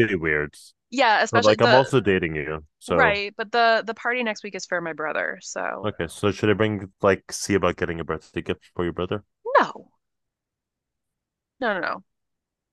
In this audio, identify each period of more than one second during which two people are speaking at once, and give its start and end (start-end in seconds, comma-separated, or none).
none